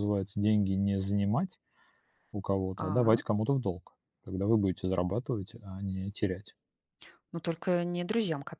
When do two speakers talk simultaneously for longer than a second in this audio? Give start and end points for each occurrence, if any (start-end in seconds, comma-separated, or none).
none